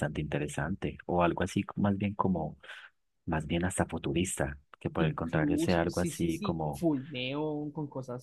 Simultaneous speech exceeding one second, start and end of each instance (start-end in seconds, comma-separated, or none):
5.0-6.9